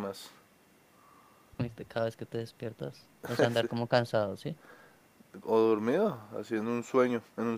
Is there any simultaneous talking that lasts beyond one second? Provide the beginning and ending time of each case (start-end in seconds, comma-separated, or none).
none